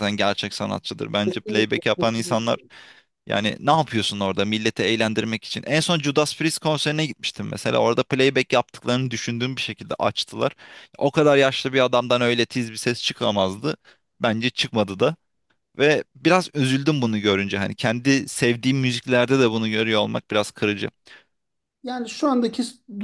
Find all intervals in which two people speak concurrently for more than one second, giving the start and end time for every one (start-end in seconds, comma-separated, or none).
1.2-2.6